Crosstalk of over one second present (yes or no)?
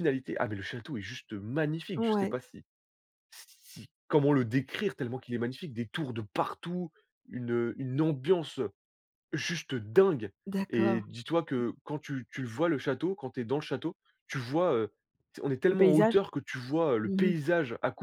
no